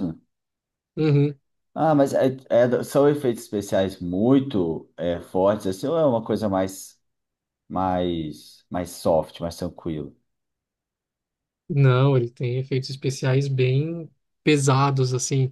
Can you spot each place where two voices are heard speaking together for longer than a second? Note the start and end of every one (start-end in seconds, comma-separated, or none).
none